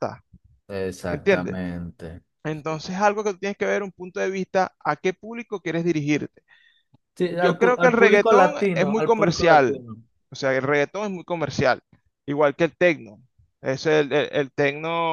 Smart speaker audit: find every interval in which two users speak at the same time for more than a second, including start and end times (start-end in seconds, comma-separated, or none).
7.2-9.8